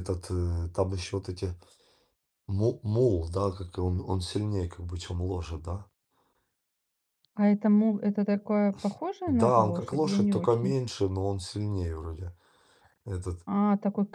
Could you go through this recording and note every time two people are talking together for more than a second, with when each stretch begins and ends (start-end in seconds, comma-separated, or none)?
9.3-10.8